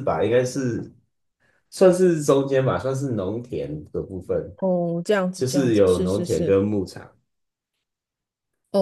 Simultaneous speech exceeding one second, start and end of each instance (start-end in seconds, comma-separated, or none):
5.3-6.5